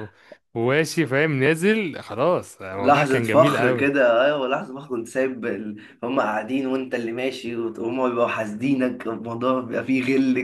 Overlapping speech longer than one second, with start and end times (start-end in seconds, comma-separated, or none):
2.8-4.0